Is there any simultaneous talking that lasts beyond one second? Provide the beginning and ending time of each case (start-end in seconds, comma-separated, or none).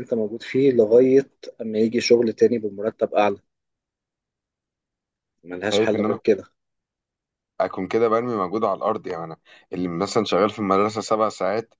none